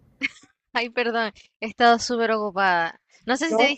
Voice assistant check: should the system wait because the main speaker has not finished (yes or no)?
yes